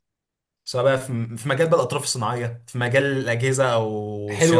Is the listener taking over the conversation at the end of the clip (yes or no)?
yes